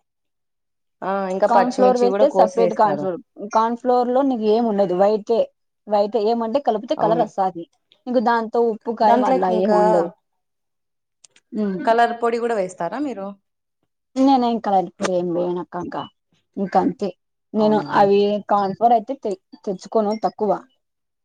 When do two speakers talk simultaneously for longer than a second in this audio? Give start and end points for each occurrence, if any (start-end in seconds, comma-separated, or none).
1.5-3.0